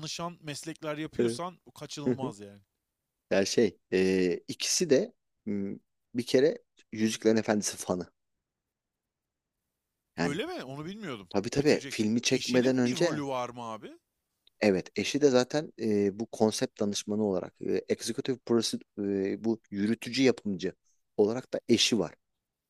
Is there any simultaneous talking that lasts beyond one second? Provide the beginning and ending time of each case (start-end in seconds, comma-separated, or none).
11.3-13.2